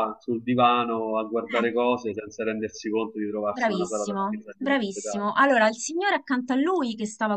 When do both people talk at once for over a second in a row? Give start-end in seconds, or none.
3.5-5.3